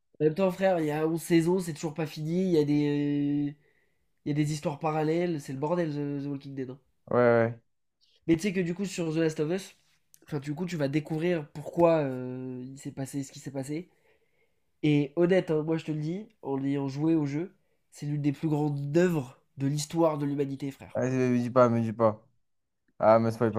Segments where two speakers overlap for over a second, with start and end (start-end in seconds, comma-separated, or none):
none